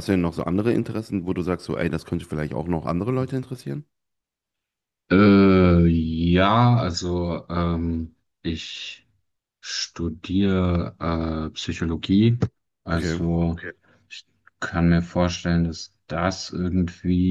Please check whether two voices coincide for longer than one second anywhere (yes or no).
no